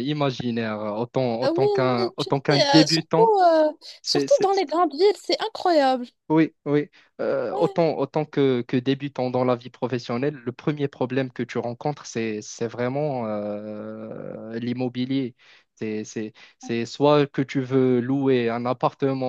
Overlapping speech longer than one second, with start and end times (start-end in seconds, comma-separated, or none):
1.4-3.3